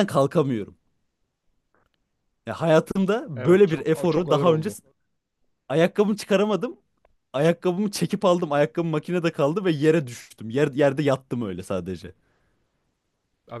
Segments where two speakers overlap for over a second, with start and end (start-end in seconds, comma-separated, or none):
3.4-4.8